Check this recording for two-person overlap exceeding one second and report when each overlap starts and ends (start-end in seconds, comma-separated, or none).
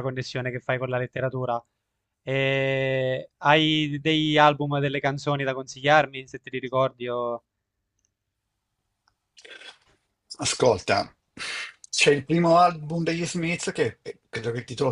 none